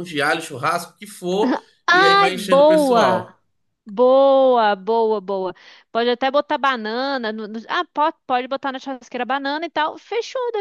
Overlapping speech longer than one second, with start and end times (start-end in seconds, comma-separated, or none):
1.9-3.3